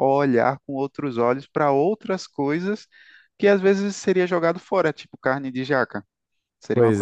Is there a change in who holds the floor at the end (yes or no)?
no